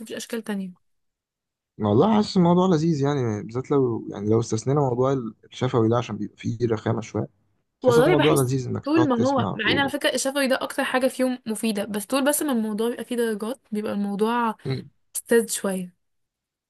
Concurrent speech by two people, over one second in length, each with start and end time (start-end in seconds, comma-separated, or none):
7.9-9.9